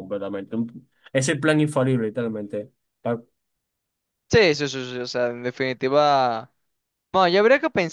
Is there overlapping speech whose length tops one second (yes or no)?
no